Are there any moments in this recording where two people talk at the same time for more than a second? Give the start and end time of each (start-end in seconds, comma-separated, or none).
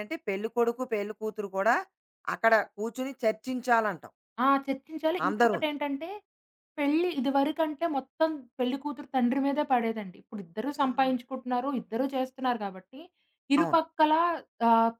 none